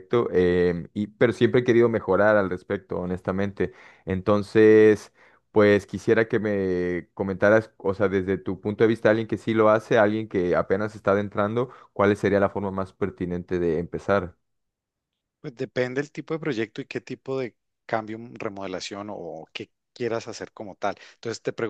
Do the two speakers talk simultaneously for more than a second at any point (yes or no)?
no